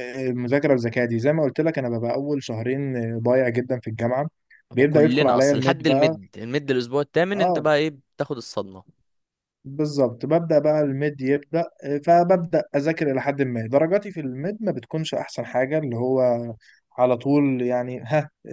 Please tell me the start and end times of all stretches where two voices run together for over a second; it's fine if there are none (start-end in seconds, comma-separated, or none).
4.7-6.2